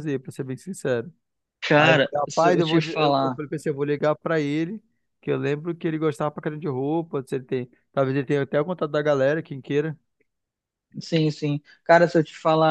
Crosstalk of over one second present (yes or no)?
yes